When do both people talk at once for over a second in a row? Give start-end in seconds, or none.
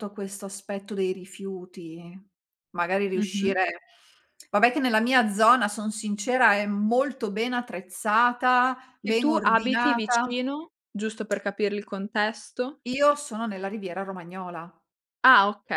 9.0-10.3